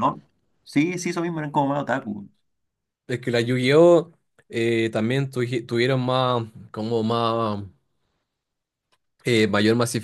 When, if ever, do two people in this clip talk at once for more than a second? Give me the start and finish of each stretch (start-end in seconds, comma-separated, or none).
none